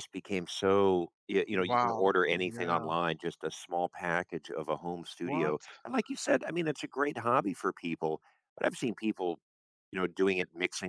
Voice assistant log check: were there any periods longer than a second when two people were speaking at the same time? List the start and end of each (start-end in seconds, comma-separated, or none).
1.5-2.9